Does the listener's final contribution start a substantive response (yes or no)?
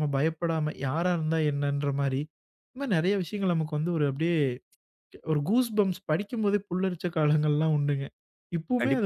yes